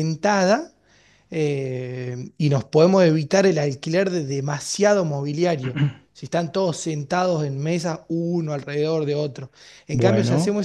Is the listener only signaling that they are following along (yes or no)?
yes